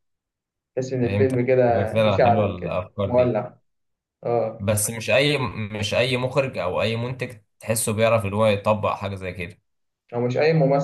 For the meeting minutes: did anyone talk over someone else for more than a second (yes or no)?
yes